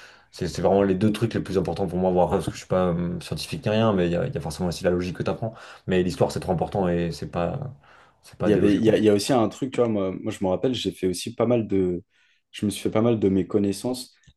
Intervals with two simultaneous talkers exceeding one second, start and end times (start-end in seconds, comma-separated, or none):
none